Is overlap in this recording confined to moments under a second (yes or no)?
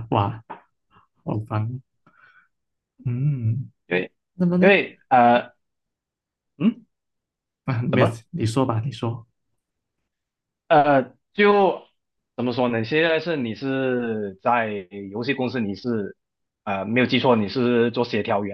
yes